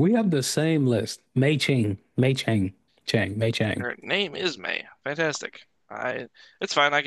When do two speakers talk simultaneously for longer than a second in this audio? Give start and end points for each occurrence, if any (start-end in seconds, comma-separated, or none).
none